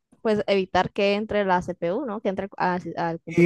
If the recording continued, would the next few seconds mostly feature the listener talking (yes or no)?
yes